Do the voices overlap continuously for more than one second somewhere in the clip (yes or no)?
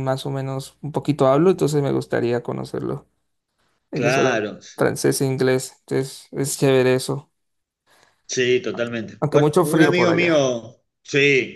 yes